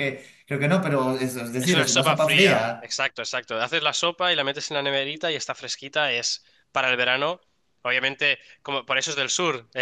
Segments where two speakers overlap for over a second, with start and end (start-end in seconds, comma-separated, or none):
1.6-3.0